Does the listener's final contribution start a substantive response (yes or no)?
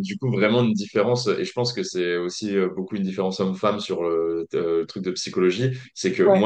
no